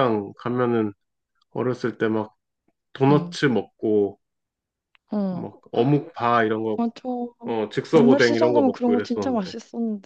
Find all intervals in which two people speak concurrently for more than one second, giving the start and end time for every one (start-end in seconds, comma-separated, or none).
8.0-9.5